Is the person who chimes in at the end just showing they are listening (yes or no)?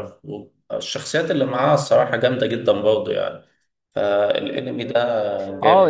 no